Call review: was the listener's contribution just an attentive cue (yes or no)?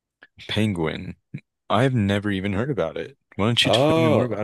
no